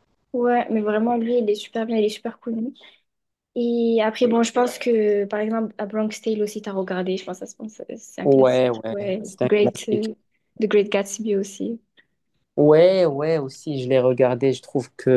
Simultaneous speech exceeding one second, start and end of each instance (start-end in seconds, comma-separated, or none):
8.2-10.1